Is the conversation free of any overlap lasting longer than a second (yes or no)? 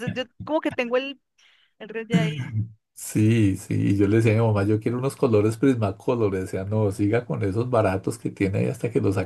yes